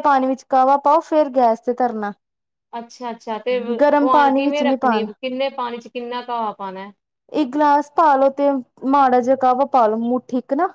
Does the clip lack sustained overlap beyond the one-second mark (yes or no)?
no